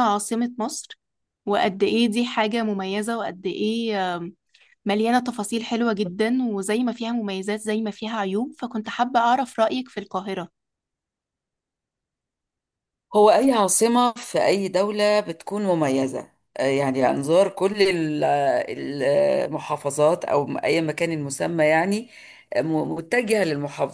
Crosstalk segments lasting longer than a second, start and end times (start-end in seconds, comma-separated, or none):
none